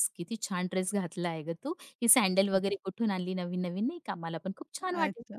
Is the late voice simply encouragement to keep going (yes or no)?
no